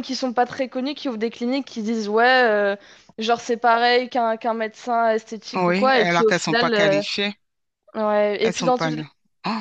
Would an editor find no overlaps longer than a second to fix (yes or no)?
no